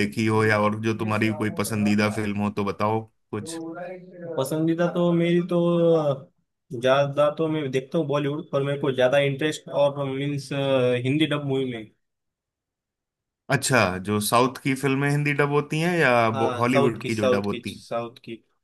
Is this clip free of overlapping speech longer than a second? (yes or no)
no